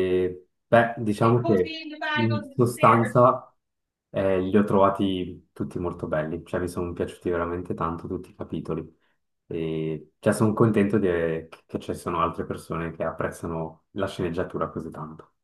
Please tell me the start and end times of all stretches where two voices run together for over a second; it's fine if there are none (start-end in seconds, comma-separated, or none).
1.2-3.2